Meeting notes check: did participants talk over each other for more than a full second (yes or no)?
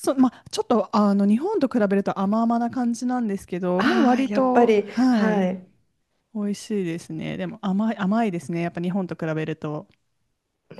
yes